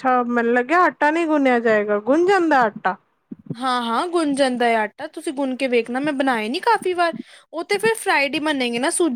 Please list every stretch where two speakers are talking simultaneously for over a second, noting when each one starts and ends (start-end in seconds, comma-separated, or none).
none